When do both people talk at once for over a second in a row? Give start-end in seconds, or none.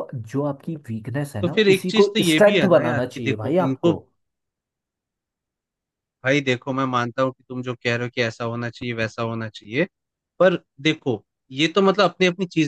1.4-3.9